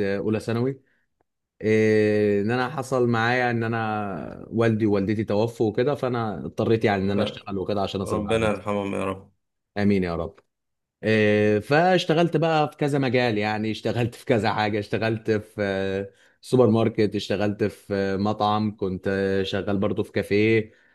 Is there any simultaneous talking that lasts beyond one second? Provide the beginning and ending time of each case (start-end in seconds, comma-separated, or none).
none